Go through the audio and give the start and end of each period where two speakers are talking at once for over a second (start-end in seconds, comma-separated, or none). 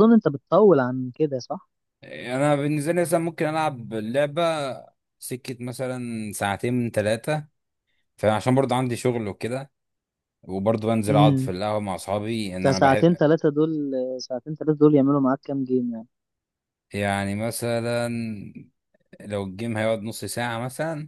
none